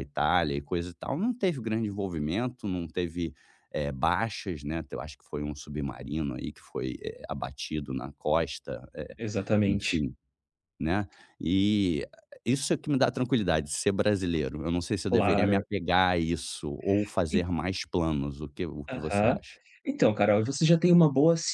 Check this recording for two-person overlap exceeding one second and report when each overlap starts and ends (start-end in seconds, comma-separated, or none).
none